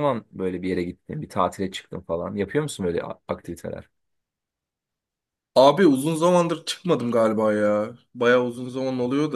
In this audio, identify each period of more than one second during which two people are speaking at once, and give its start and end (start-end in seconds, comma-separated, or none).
none